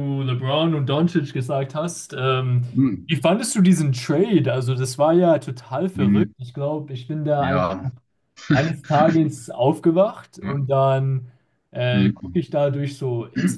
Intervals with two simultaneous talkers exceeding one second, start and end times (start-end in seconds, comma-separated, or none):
none